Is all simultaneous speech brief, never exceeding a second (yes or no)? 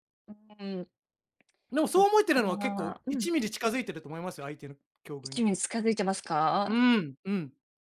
no